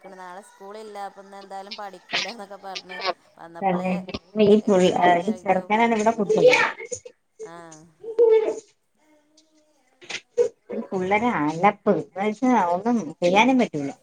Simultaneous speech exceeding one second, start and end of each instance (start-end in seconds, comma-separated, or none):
4.7-6.2